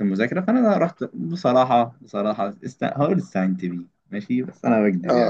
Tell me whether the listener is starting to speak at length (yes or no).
yes